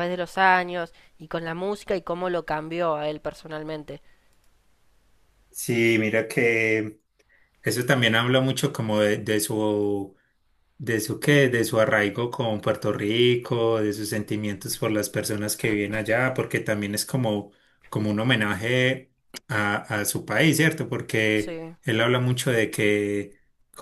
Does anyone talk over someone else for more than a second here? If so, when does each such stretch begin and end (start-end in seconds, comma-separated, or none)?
none